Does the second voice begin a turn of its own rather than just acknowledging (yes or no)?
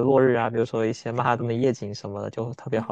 yes